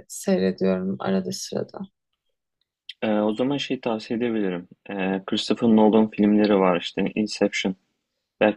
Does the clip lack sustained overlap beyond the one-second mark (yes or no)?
yes